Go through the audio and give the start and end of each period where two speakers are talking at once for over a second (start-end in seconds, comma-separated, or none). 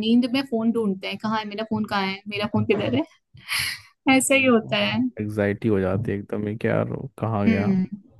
none